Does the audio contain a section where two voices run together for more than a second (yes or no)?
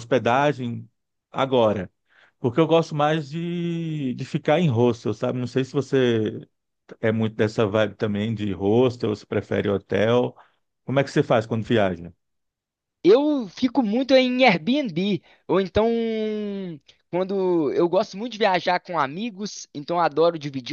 no